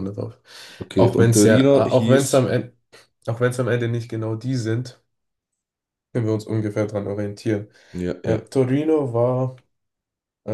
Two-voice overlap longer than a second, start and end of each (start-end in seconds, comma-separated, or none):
0.9-2.5